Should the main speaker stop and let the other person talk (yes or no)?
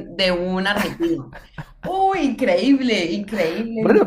yes